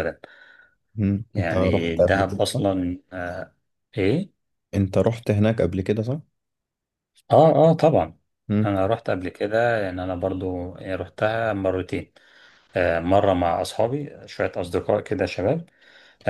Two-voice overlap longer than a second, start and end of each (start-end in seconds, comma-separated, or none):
1.3-2.6